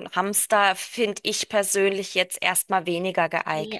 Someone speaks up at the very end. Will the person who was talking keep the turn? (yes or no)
no